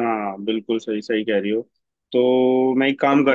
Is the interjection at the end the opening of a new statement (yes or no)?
no